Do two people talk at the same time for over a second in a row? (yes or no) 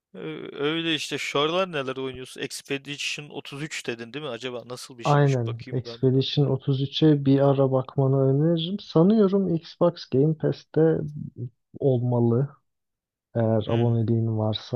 yes